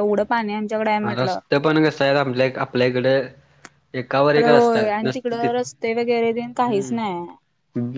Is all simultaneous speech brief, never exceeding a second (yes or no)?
yes